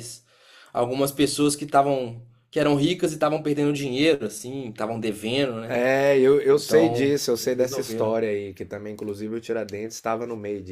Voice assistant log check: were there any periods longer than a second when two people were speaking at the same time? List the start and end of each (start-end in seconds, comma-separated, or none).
6.4-8.2